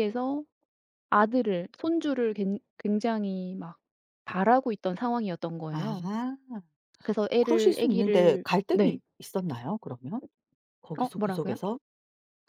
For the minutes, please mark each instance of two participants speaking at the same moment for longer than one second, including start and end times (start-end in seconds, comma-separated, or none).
7.4-9.0